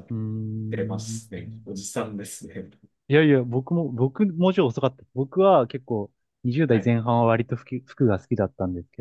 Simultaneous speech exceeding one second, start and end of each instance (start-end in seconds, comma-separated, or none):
none